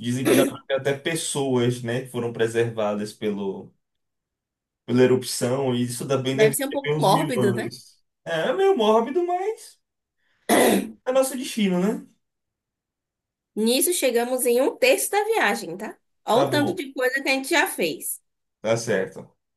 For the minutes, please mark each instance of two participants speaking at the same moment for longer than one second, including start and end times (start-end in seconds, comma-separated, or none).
6.3-7.7